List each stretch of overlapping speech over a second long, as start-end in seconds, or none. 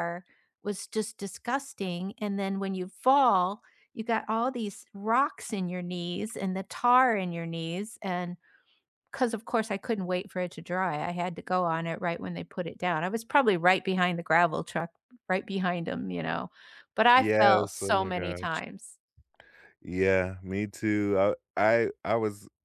17.2-18.6